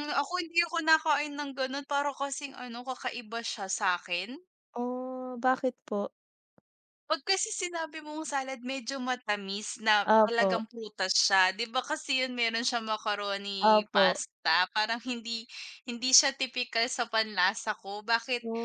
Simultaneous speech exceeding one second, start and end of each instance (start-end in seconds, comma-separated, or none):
none